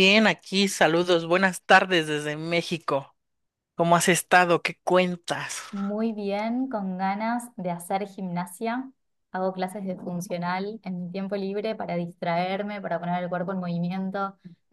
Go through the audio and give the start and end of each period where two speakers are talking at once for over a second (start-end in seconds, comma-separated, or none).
none